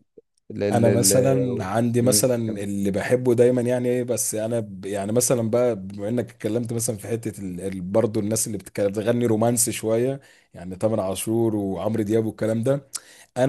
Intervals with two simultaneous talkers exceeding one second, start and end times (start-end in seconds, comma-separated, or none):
0.7-2.6